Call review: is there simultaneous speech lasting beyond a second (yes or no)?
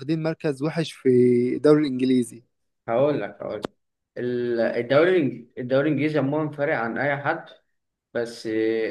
no